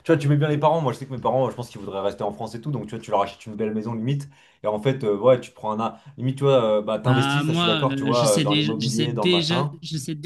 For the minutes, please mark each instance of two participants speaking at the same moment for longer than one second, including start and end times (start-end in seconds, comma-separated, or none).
7.0-9.8